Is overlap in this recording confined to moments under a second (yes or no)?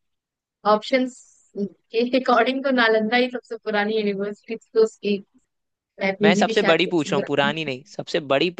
no